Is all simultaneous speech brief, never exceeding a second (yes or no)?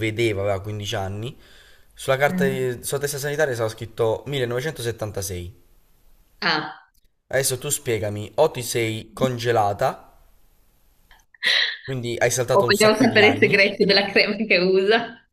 no